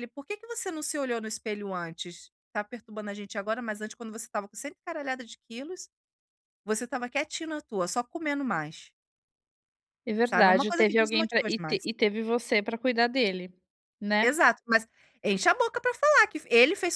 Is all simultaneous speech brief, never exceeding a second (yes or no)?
no